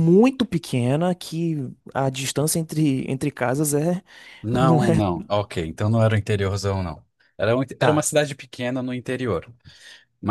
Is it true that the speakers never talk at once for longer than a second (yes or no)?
yes